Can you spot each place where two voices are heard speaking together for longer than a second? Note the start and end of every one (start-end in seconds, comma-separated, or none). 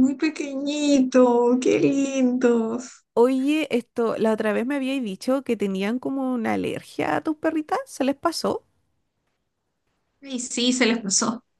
none